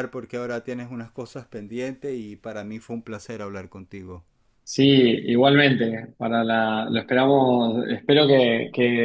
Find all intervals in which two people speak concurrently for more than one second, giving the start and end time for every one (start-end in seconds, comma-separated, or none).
none